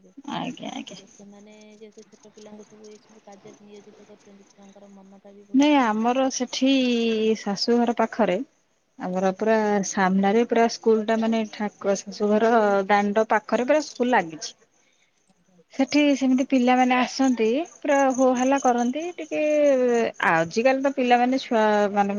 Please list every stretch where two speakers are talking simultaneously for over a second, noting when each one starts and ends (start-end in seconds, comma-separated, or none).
none